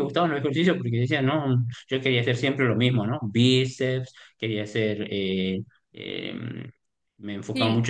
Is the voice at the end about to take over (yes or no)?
no